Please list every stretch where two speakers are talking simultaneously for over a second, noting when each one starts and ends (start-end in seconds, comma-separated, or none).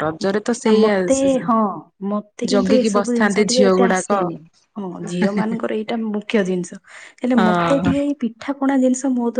2.5-4.1